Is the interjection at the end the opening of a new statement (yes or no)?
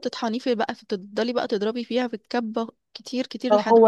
yes